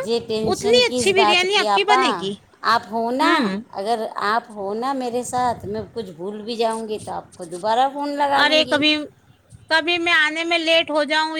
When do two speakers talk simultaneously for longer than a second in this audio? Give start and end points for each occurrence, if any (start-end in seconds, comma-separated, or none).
0.5-2.0